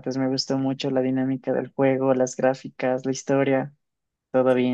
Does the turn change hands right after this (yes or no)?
yes